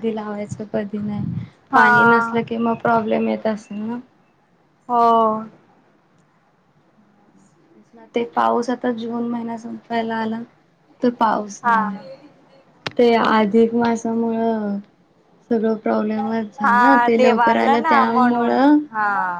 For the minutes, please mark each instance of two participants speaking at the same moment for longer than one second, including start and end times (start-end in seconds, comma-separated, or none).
16.6-18.8